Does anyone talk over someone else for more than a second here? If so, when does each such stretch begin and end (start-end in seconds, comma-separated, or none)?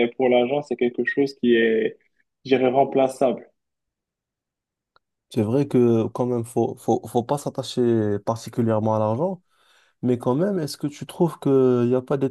none